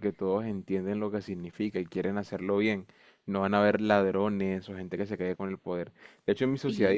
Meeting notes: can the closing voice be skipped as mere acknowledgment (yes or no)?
yes